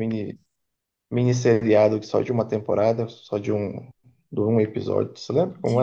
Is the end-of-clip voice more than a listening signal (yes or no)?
yes